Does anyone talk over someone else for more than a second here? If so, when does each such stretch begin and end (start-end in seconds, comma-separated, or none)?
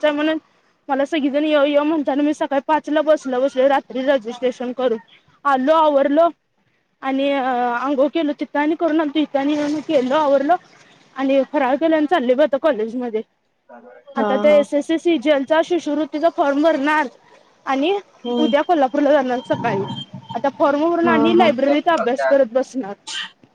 21.0-22.3